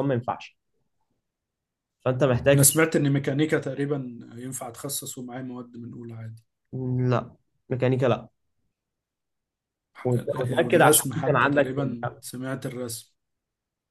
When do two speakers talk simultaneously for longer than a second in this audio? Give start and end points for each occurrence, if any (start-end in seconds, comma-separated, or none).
10.2-12.2